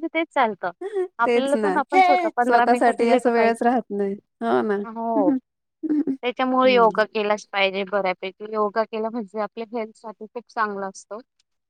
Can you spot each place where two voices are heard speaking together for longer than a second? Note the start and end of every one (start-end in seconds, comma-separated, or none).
2.4-3.7